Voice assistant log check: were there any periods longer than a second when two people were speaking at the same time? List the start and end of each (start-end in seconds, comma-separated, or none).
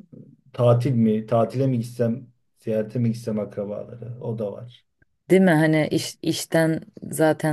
none